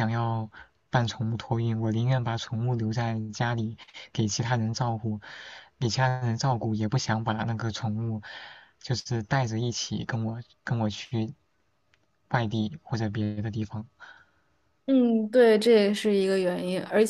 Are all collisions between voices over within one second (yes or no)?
yes